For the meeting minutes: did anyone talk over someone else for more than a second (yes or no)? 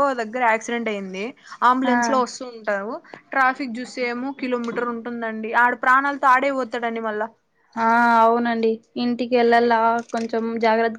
no